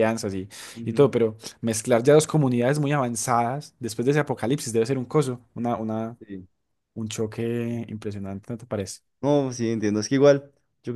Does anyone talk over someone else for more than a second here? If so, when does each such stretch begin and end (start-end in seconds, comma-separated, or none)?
none